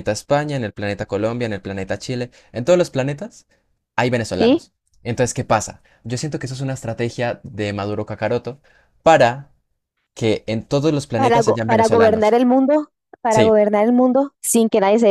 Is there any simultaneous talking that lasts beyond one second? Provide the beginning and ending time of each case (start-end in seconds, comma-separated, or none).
11.2-12.4